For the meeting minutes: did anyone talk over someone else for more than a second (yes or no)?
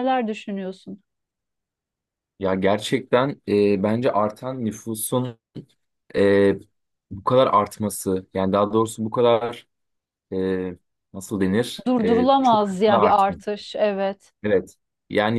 yes